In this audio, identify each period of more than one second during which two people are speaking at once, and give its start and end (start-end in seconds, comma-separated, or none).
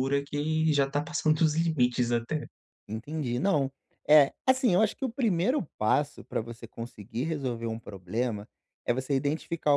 none